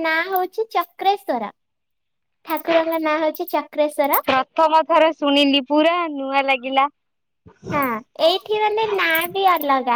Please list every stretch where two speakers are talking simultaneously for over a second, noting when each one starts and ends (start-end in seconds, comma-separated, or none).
none